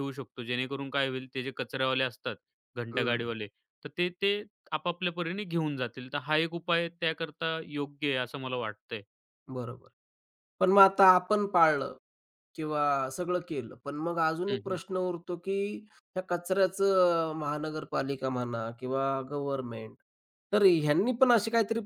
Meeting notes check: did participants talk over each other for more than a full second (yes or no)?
no